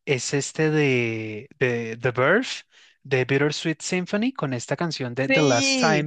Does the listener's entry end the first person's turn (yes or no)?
no